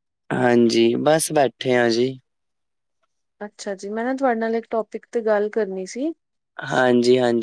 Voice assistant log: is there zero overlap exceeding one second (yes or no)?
yes